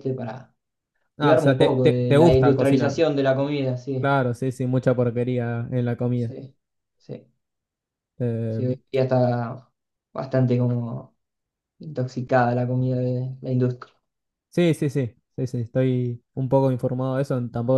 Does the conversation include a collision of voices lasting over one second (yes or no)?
yes